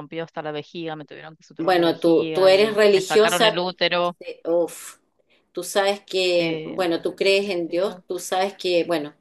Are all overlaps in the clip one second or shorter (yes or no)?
no